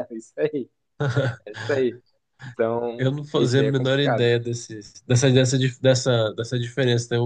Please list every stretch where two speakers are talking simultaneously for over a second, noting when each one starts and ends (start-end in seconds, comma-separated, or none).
3.0-4.3